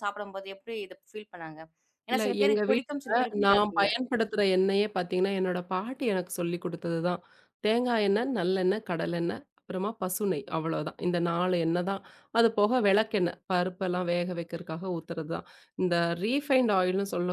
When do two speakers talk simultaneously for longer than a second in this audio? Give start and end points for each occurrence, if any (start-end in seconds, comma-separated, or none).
2.1-3.9